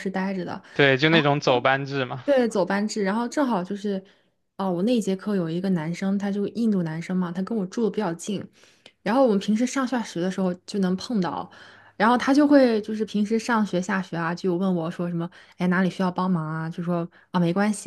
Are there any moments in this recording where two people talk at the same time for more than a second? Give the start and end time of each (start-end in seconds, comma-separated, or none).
none